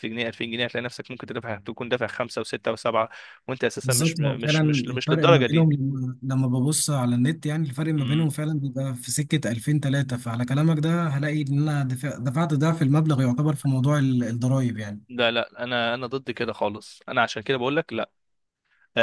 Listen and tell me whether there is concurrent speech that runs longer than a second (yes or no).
yes